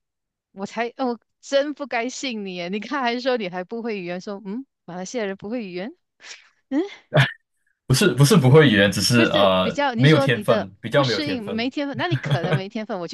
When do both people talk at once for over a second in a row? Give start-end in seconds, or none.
9.1-11.7